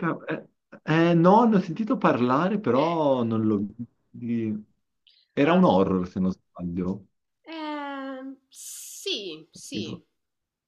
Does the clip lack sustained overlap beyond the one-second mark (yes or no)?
yes